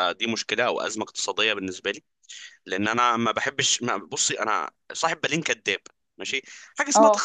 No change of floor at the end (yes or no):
yes